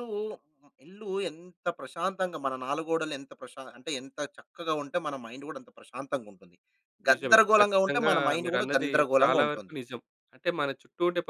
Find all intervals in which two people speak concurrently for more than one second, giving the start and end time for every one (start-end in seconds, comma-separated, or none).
7.1-9.7